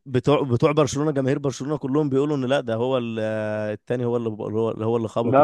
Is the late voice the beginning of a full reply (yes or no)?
yes